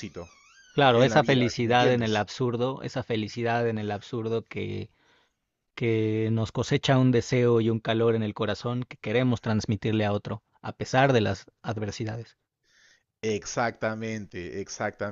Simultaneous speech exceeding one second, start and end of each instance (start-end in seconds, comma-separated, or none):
0.9-2.3